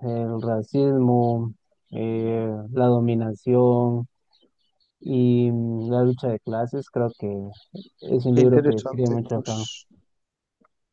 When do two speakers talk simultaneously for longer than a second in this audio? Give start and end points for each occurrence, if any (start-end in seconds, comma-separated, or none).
8.3-9.6